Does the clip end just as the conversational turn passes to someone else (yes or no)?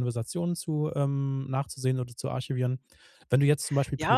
yes